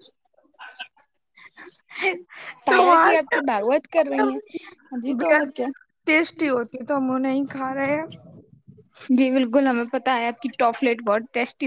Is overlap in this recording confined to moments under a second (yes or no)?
no